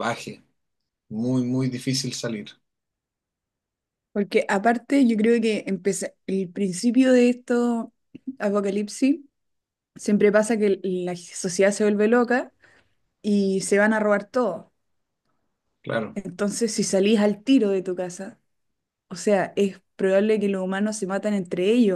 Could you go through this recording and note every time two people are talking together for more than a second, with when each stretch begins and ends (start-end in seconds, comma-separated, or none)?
none